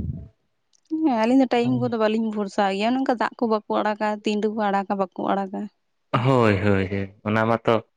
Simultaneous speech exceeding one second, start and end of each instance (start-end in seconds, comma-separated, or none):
none